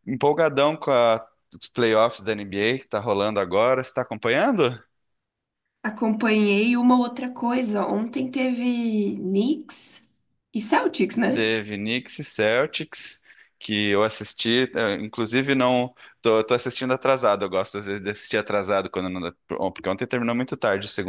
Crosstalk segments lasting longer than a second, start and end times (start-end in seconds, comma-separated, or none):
none